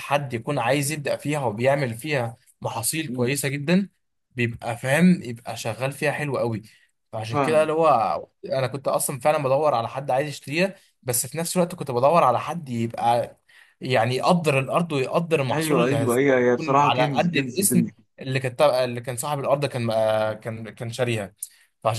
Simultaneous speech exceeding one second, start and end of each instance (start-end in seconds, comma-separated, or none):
15.5-17.9